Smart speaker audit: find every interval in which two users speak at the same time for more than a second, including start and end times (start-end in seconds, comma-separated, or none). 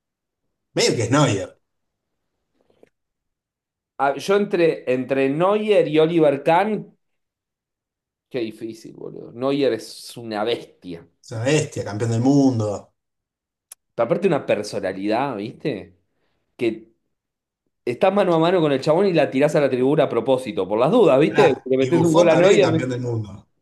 21.3-22.9